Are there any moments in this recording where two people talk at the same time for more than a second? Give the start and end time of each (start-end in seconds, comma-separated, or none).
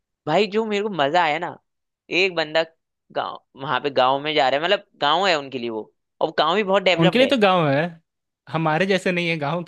none